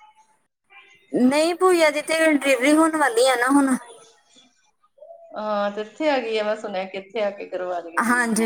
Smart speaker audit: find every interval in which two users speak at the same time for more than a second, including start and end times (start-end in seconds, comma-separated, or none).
none